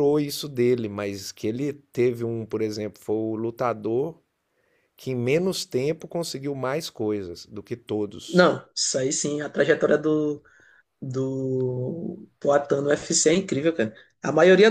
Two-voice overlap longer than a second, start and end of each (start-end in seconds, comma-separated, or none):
none